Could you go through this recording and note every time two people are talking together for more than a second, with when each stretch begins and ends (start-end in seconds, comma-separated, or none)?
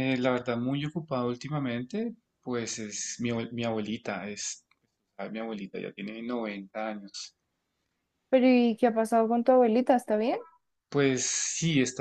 none